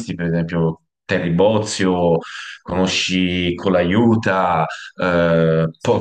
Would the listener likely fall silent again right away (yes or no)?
no